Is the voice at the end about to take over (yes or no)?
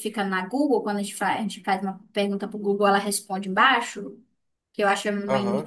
no